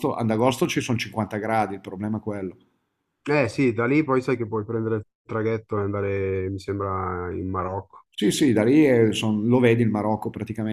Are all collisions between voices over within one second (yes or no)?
yes